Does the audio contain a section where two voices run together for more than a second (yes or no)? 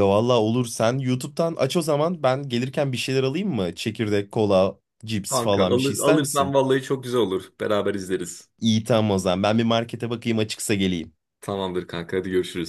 yes